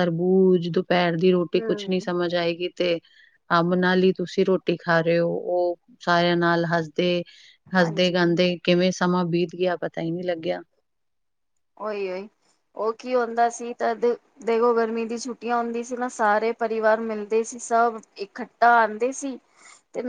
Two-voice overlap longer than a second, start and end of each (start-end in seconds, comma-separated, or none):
none